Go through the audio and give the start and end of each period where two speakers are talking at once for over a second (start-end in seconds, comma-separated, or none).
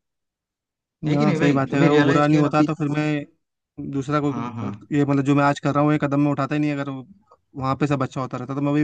1.1-2.7